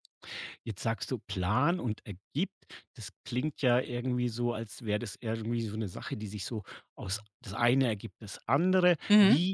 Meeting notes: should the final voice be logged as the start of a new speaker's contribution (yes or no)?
no